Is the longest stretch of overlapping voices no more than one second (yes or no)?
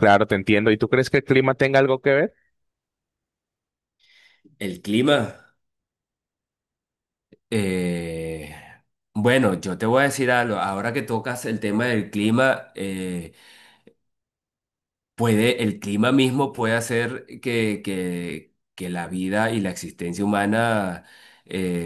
yes